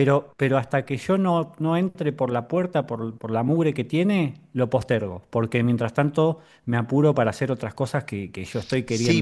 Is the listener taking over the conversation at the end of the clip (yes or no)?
yes